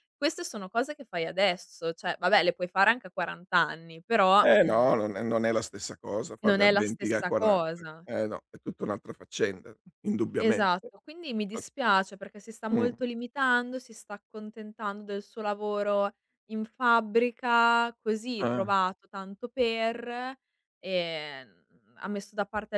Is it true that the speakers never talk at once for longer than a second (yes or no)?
no